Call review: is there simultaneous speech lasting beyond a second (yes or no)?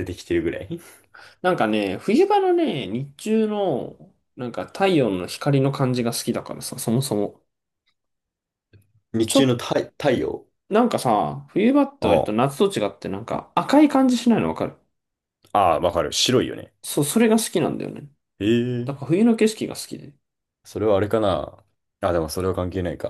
no